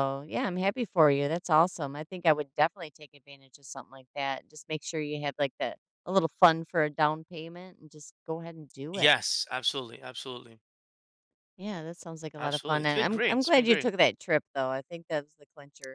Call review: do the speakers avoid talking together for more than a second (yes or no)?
no